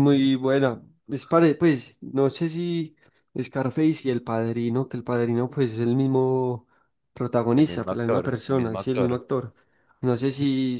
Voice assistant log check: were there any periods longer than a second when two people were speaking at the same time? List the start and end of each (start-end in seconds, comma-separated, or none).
7.5-9.2